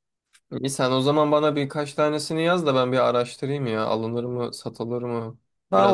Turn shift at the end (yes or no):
yes